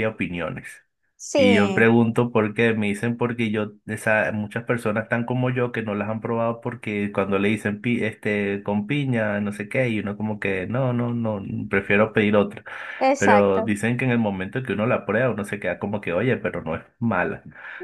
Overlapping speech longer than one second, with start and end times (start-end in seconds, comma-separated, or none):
none